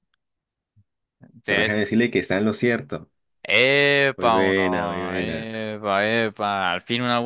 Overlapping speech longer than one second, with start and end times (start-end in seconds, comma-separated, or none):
4.2-5.5